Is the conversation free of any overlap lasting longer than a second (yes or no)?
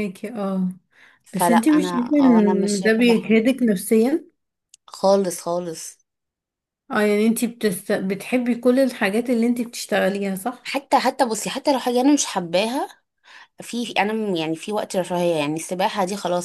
no